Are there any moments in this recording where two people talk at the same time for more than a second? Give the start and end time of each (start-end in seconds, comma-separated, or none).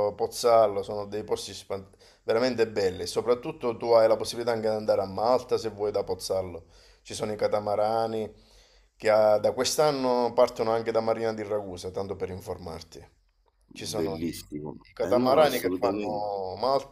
14.9-16.3